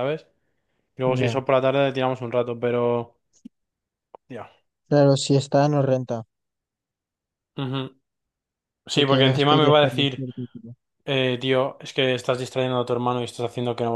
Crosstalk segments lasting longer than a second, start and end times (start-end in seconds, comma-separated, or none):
8.9-10.2